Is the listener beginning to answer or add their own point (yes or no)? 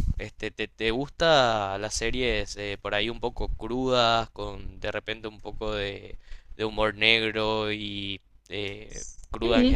yes